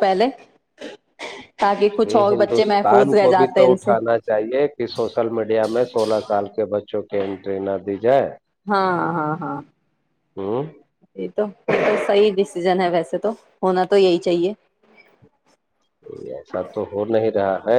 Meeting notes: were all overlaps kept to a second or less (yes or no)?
no